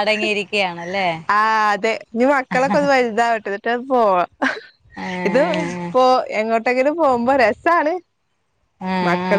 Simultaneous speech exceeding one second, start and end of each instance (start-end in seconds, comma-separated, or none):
none